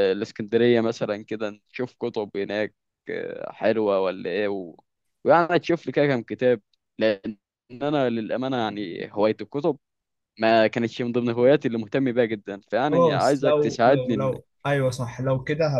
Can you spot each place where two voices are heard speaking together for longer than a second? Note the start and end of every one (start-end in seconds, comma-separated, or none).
12.9-14.3